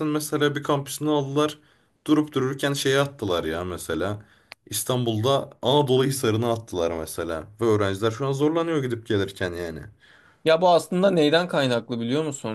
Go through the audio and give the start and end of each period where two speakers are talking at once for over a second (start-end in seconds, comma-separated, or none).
none